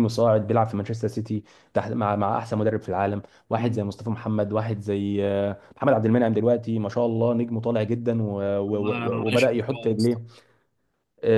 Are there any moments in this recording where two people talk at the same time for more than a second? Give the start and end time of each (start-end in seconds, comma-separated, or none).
8.7-10.2